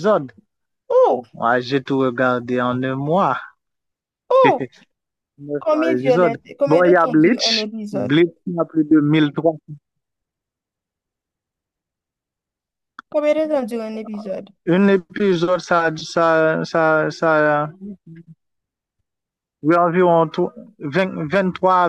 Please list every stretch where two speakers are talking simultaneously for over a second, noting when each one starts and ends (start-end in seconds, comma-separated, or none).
5.6-8.2